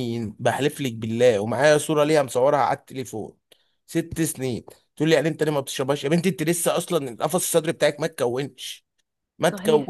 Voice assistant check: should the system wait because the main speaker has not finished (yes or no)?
no